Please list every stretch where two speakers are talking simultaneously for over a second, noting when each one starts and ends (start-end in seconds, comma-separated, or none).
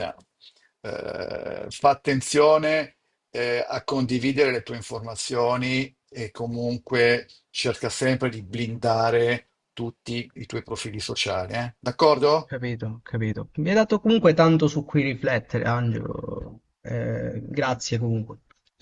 none